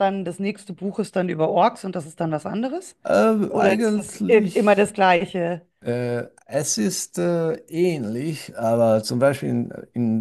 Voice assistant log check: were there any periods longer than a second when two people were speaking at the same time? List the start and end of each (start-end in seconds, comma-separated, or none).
3.5-4.9